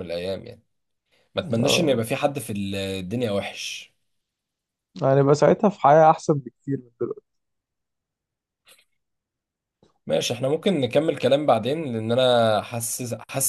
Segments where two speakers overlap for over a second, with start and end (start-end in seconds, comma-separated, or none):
none